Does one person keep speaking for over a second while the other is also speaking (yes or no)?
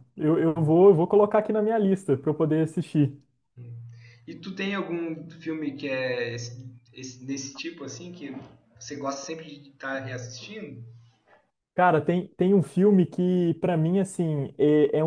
no